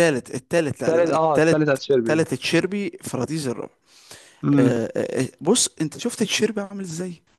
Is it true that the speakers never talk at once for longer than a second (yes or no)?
no